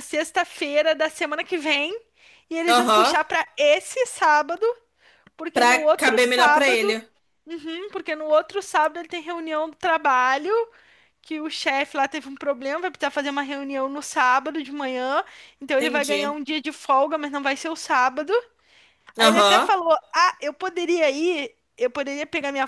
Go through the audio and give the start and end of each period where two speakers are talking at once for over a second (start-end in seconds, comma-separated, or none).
5.5-7.0